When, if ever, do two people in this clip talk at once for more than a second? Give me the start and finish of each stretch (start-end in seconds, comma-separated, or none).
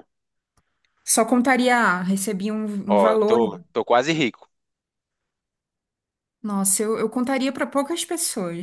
none